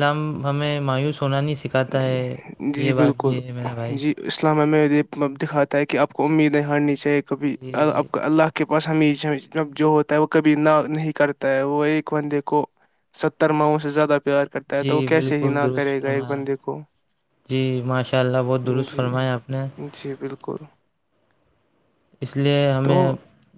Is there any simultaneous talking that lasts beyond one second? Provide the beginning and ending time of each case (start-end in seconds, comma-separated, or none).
14.8-16.4